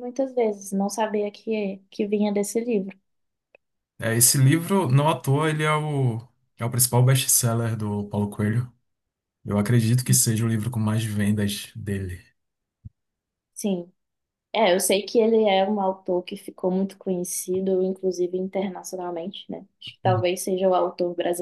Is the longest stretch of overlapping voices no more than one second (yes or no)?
yes